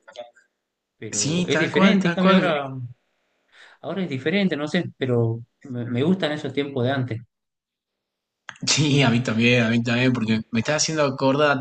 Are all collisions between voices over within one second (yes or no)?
no